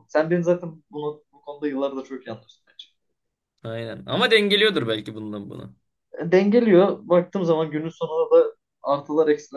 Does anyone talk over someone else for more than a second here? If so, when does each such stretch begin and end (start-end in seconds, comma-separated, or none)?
none